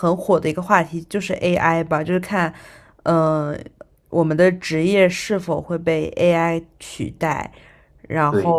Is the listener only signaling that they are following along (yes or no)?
yes